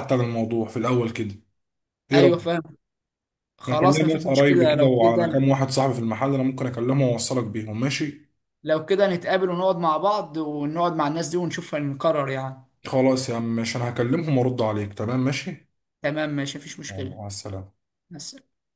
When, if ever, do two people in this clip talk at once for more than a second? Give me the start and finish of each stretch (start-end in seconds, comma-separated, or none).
3.7-5.4